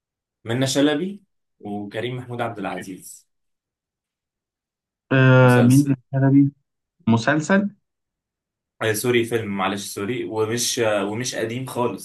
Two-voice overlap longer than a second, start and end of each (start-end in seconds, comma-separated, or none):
none